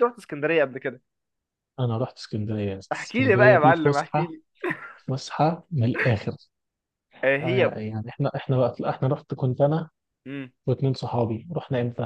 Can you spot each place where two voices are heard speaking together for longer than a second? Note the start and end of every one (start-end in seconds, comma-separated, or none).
2.9-4.3